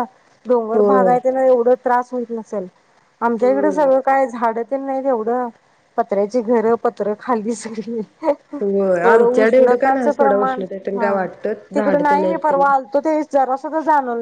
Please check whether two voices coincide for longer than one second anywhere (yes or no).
yes